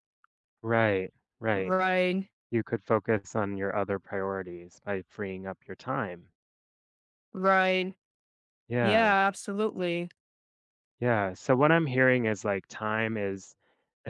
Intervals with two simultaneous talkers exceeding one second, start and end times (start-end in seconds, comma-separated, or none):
none